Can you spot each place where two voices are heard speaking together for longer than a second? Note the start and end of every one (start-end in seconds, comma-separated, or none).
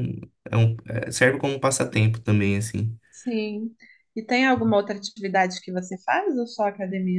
none